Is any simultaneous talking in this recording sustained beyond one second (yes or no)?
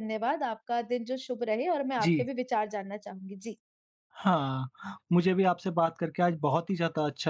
no